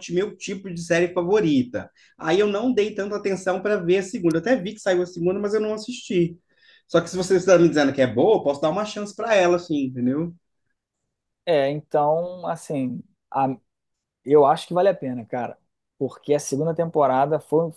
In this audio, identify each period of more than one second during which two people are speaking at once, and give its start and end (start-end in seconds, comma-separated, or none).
none